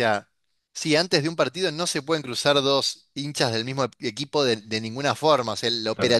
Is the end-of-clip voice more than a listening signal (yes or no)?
no